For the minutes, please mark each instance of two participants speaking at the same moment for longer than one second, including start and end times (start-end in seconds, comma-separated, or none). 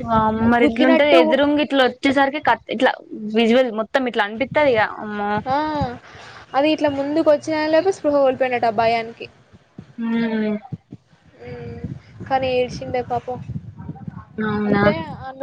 none